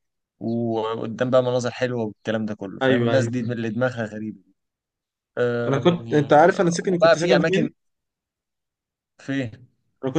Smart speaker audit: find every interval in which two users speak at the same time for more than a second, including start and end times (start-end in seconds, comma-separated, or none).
5.7-7.7